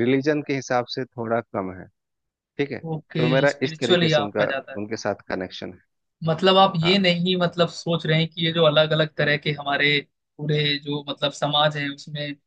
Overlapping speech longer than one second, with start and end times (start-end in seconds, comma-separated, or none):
2.9-4.8